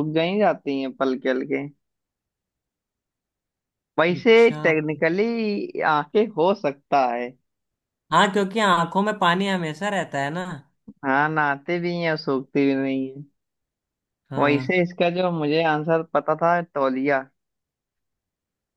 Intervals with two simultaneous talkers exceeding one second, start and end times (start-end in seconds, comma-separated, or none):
none